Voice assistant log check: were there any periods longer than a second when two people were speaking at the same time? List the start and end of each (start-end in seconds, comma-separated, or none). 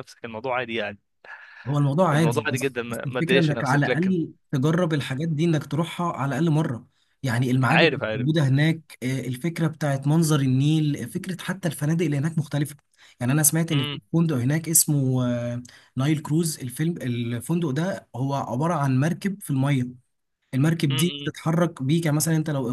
2.1-4.2